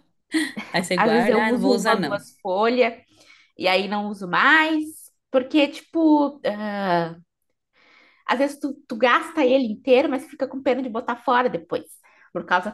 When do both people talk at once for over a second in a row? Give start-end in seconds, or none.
1.0-2.2